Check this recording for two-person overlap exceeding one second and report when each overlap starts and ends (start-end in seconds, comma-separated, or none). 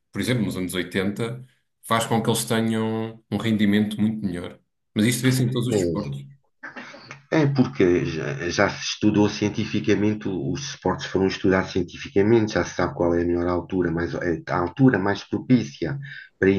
none